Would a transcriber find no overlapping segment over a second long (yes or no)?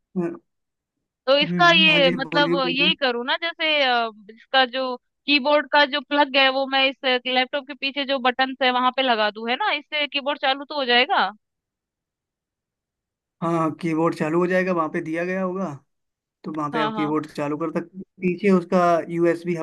no